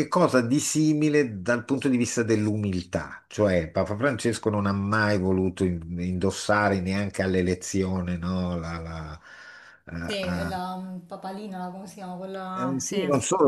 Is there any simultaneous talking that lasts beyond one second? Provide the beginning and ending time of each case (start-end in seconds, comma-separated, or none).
none